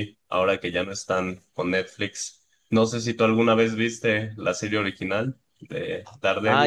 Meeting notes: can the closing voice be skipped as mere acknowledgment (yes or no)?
no